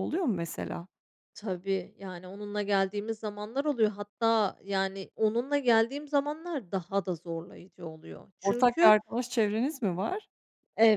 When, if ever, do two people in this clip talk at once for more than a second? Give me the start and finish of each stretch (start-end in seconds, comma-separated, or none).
none